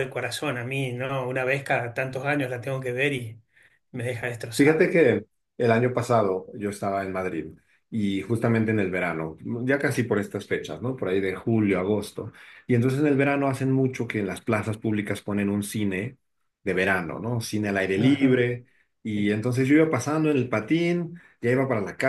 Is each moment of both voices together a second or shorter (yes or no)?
yes